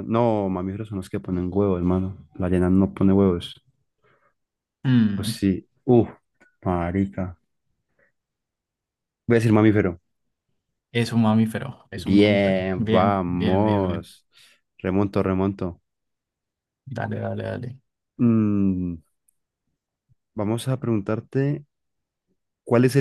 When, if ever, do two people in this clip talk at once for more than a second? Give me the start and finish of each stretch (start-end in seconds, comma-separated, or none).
11.9-14.2